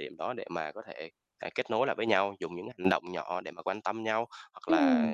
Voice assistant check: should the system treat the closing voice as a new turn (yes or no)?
no